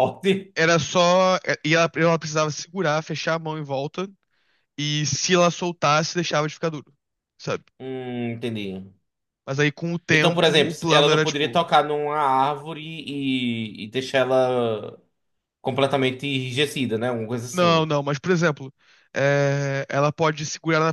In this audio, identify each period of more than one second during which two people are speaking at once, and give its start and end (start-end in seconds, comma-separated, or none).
10.1-11.7